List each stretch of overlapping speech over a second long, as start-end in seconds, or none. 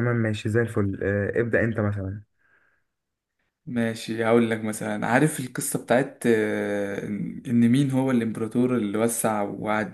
none